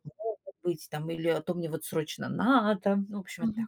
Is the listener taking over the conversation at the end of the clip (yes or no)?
yes